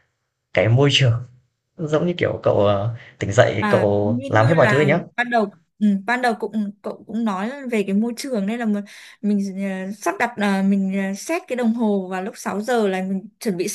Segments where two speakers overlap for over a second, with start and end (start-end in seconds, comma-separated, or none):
3.6-5.0